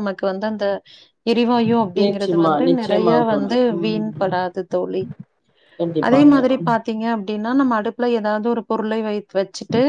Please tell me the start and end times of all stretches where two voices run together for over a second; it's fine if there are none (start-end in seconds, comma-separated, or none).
2.0-4.3